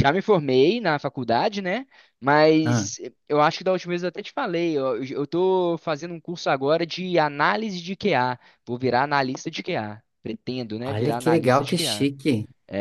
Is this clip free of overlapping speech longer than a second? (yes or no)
no